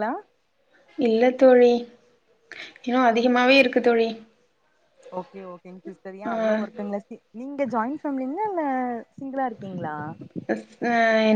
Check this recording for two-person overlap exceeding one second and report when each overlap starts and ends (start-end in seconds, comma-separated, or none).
none